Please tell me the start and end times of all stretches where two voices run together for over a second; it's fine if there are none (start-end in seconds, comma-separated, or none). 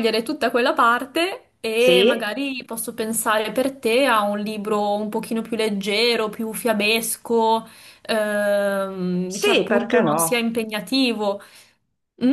9.2-10.5